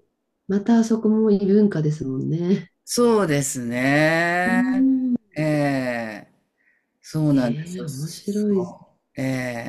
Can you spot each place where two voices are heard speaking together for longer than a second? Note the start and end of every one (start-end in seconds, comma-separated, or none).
7.3-8.8